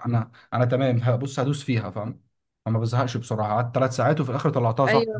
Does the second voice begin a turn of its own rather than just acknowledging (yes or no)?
no